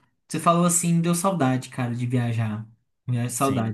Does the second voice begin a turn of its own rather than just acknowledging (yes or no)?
yes